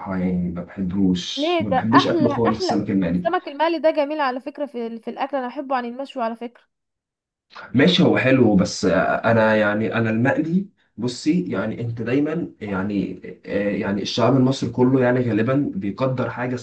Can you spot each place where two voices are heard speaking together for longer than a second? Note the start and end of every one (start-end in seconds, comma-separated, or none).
1.4-3.3